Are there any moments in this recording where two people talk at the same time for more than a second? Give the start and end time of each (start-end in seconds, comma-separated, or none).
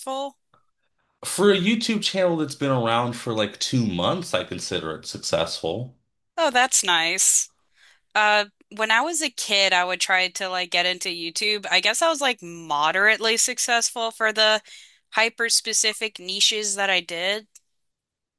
none